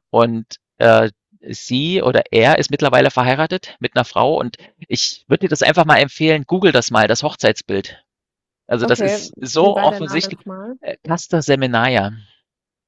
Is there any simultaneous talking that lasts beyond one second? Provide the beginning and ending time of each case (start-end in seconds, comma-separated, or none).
8.8-10.8